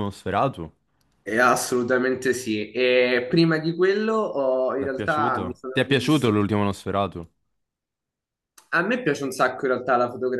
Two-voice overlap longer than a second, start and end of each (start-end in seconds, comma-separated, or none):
4.8-6.3